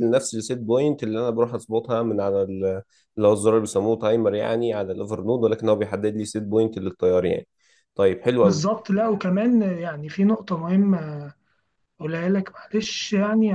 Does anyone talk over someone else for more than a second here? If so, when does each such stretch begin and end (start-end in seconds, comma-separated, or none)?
none